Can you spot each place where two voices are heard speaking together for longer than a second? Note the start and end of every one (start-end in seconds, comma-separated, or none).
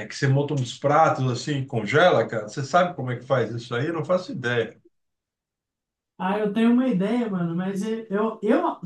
none